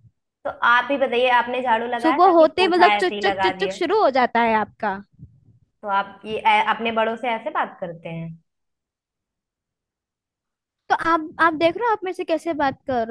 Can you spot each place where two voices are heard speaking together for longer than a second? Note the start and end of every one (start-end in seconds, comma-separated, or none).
2.0-3.8